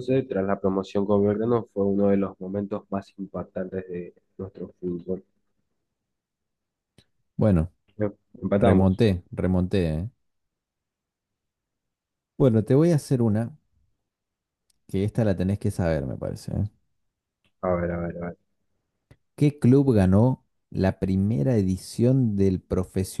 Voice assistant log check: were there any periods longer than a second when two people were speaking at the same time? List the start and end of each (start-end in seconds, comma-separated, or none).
none